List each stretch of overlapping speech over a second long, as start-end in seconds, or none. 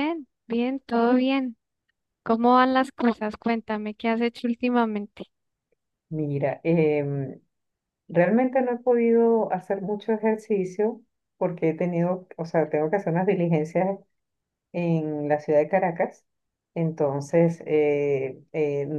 none